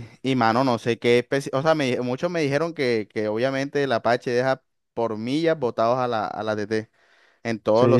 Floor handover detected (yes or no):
yes